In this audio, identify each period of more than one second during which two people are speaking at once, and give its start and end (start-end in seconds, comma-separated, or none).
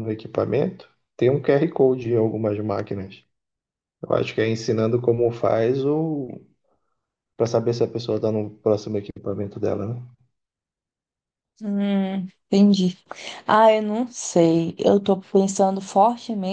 none